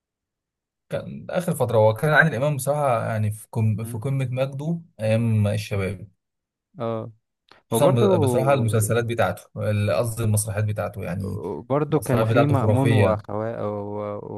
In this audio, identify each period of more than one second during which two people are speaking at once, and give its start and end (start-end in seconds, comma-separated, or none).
11.9-13.2